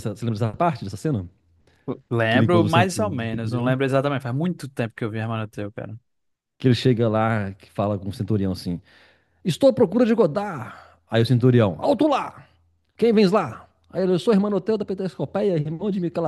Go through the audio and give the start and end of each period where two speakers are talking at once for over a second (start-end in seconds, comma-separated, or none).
2.3-3.8